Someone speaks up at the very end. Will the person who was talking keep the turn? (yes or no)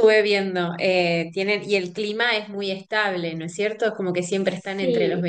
yes